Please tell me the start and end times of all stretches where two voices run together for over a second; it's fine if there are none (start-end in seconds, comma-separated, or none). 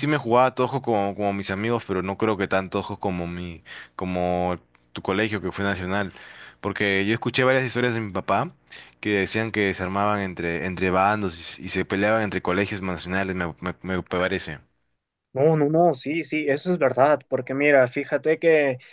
none